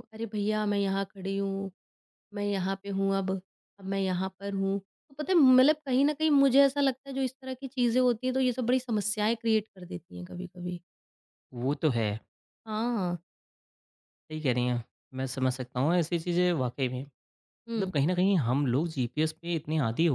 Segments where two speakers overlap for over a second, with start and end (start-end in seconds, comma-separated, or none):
none